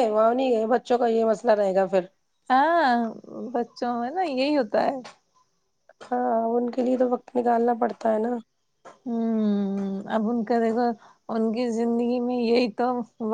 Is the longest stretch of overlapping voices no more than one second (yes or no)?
yes